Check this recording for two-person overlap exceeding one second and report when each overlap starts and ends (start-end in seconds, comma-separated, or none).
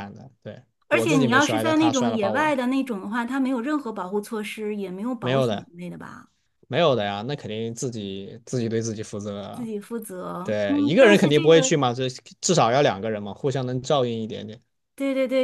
0.9-2.5, 10.4-11.8